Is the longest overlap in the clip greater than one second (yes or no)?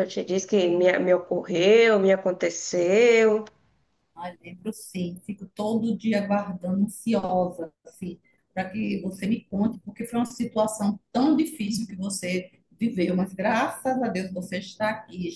no